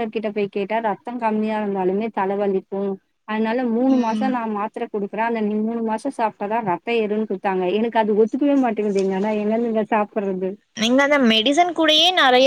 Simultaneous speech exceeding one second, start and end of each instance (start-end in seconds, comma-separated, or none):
none